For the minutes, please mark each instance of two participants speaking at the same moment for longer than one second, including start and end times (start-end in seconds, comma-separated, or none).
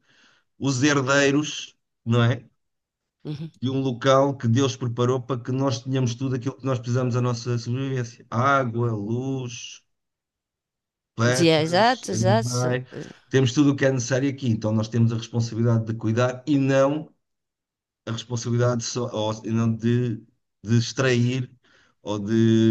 11.2-12.8